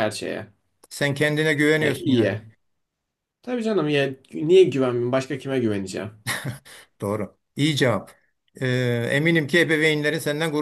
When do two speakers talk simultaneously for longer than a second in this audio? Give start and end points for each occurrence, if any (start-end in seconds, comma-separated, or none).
none